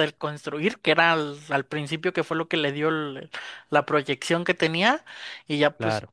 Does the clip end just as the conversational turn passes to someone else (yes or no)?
no